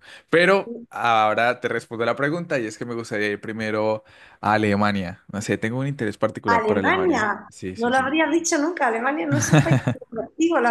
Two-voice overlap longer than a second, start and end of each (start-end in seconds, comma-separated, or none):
6.5-8.1